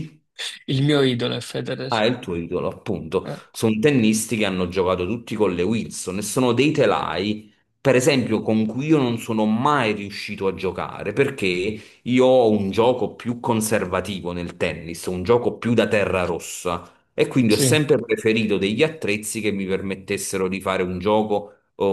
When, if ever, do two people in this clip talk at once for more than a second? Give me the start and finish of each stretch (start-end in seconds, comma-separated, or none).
none